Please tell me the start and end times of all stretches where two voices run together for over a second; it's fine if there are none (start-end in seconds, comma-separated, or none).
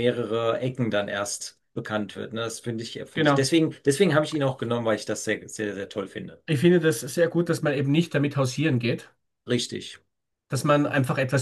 none